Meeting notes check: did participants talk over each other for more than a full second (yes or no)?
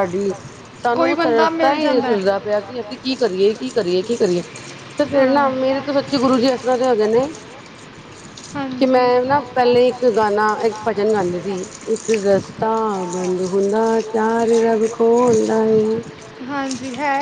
yes